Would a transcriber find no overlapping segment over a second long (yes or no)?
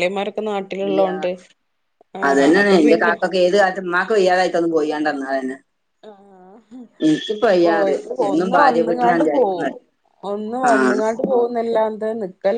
no